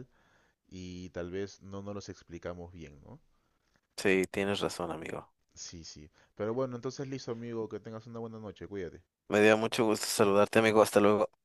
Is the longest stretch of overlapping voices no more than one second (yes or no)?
yes